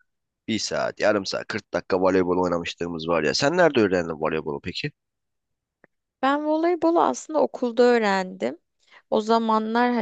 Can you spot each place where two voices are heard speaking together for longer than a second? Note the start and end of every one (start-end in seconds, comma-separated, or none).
none